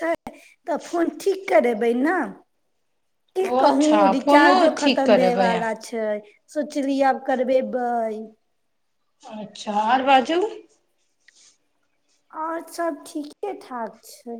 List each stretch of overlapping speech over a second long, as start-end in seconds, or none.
3.5-5.7